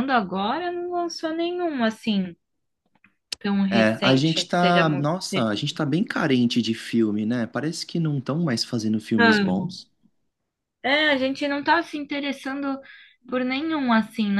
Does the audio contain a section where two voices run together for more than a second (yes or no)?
yes